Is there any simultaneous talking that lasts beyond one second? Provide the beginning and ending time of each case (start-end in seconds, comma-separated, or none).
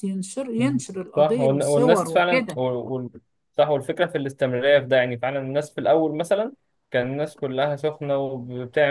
0.6-2.6